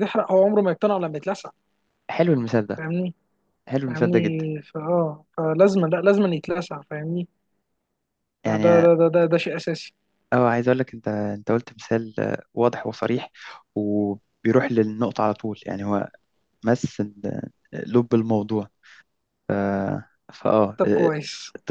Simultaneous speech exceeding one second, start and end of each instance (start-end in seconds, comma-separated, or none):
none